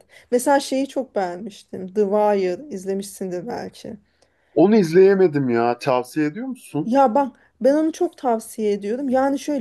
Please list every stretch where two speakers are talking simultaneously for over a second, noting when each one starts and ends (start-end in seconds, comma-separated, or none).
none